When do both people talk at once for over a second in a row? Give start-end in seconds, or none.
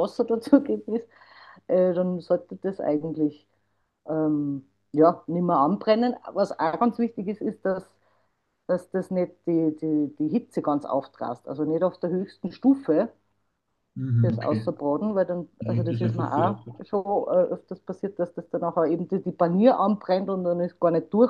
15.6-16.8